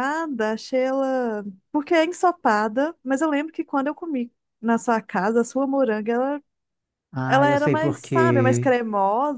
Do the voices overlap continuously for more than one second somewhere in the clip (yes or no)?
yes